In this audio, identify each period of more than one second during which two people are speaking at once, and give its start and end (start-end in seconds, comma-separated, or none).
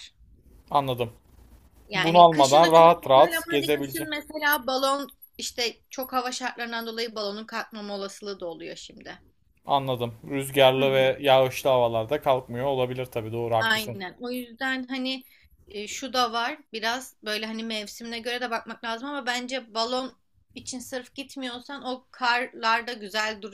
1.9-4.1